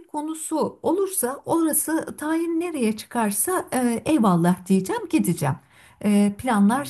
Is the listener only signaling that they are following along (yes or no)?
yes